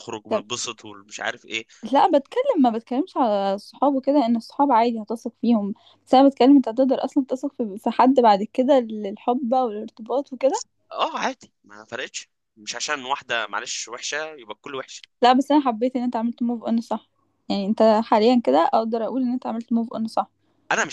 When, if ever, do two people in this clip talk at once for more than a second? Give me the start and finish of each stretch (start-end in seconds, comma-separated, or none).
none